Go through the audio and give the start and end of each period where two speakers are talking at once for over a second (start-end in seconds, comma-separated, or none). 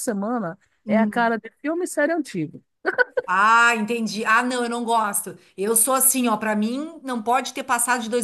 none